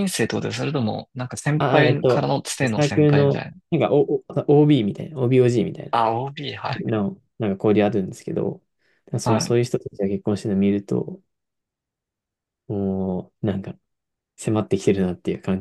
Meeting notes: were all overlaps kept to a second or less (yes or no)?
no